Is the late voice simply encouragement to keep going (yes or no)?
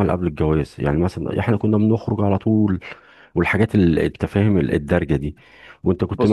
yes